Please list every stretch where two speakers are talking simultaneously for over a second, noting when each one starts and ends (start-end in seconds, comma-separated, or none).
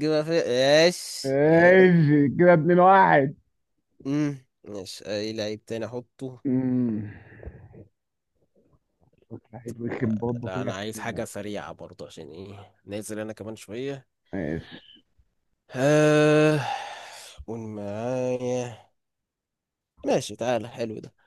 9.9-11.2